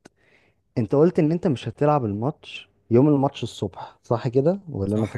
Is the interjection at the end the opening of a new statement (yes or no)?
yes